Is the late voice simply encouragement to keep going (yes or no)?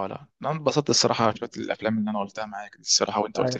no